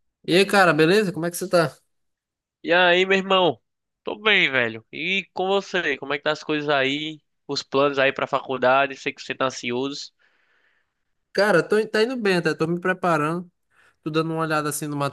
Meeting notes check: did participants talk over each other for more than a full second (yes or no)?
no